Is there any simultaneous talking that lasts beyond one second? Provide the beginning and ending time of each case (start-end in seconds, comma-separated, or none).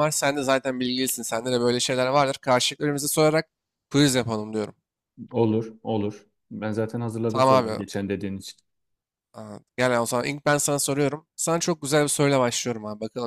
none